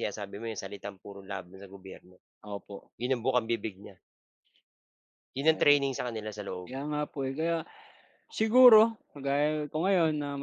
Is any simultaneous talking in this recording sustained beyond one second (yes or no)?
no